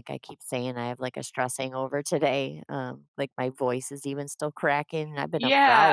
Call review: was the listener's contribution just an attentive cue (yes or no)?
no